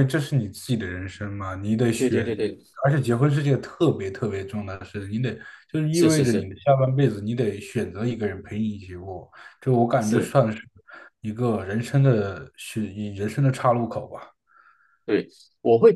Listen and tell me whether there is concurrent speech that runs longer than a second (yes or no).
no